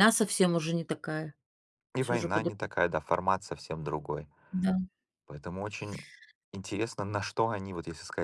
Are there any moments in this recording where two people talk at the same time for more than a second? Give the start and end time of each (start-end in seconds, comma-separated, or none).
none